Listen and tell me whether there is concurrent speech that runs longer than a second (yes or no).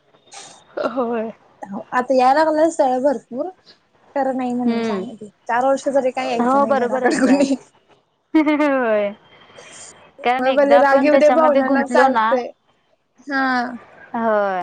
yes